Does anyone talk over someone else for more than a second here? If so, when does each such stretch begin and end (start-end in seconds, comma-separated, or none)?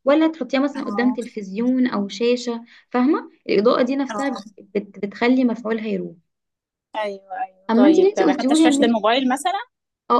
7.7-9.0